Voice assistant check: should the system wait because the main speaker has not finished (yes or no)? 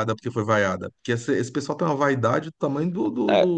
no